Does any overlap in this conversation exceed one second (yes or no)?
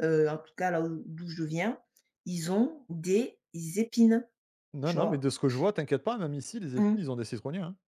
no